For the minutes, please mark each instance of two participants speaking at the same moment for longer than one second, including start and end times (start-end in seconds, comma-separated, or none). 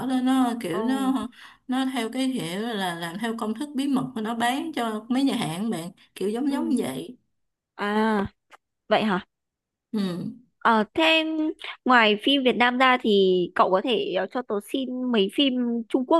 none